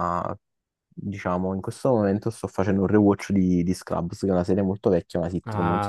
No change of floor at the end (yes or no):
no